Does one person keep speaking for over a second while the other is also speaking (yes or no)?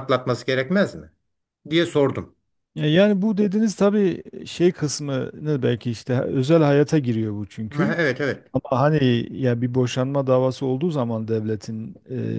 no